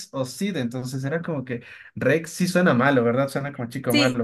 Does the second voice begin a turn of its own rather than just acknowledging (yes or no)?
yes